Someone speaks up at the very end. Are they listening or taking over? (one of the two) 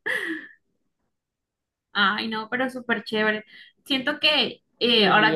taking over